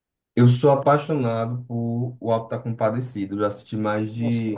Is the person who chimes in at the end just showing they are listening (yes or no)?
yes